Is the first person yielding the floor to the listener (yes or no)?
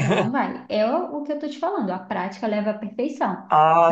yes